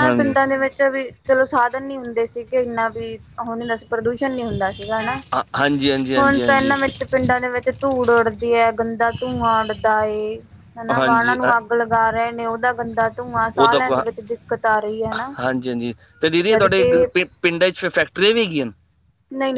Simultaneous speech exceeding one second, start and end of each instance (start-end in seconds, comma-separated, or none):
none